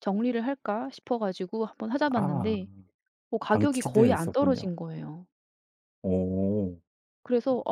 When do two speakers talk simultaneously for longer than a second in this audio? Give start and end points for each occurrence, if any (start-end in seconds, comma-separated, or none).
3.5-4.7